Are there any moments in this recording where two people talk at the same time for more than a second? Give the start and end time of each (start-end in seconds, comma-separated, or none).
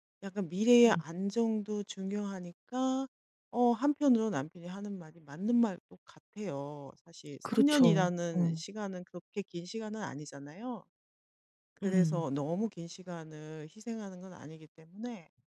7.4-8.6